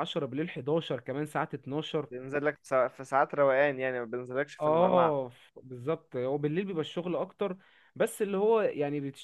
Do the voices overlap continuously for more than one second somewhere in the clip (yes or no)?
no